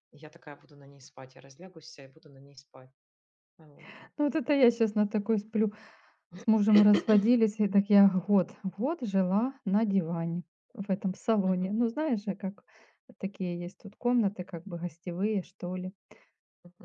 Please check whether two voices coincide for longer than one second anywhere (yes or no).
no